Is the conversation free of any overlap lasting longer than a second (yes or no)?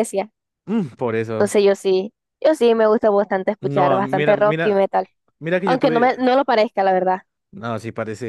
no